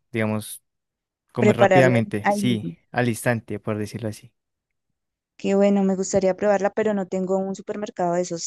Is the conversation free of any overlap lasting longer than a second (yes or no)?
no